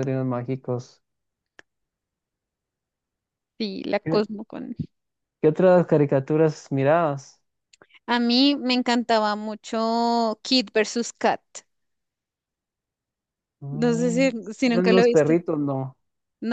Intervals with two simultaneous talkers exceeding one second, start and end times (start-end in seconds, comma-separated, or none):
13.7-15.3